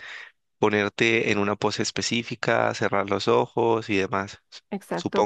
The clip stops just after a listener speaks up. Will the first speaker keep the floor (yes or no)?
no